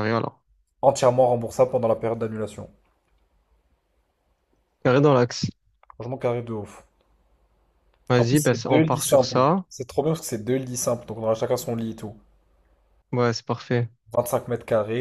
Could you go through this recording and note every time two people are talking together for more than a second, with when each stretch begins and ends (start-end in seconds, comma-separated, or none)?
8.2-9.6